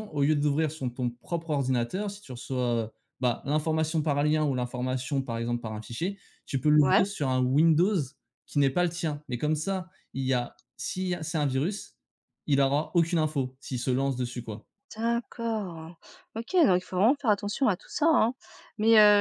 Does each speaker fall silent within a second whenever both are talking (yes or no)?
yes